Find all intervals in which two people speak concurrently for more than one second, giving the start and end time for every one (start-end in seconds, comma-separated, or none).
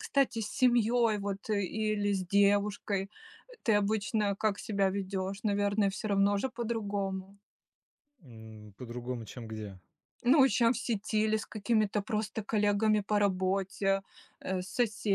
none